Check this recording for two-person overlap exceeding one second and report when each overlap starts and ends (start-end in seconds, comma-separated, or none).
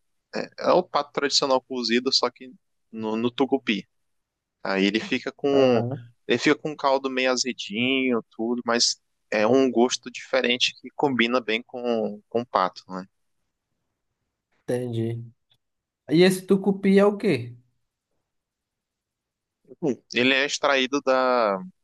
none